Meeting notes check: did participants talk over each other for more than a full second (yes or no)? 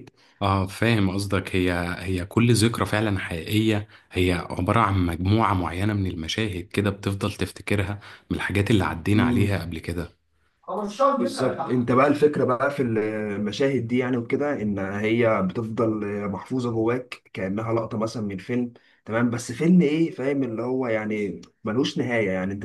no